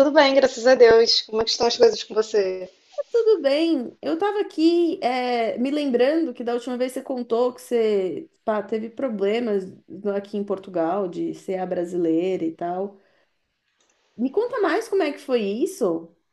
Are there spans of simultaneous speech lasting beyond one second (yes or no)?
no